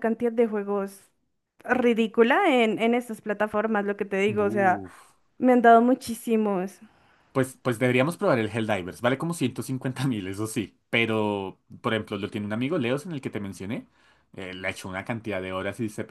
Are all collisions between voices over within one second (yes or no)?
yes